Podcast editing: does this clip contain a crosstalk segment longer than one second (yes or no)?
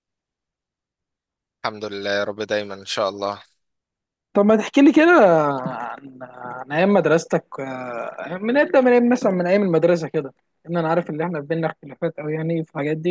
no